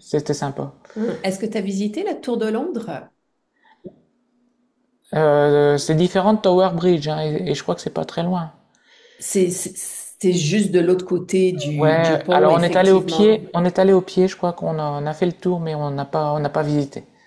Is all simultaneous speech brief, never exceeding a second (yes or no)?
no